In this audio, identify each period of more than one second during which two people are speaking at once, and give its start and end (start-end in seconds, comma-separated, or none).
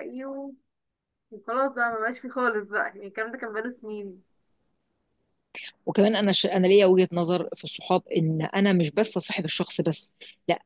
none